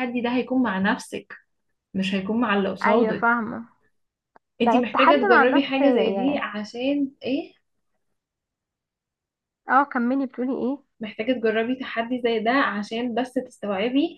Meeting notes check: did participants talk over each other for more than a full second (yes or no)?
yes